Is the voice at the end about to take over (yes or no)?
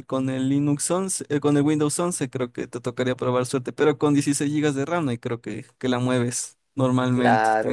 yes